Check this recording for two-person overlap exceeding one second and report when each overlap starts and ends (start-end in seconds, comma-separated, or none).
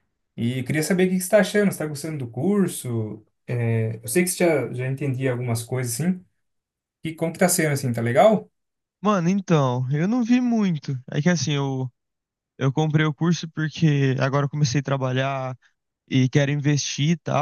none